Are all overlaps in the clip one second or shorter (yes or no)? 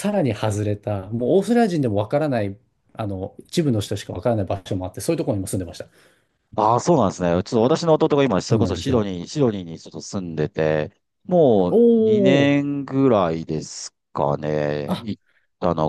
yes